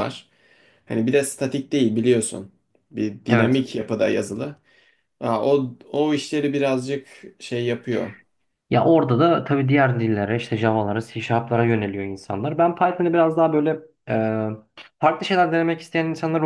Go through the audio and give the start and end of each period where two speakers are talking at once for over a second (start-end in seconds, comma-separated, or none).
none